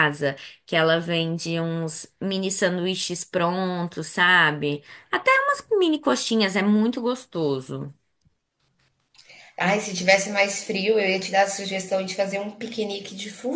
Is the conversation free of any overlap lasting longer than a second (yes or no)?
yes